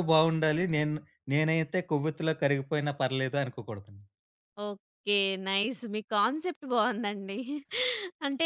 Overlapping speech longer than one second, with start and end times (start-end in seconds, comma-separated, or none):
none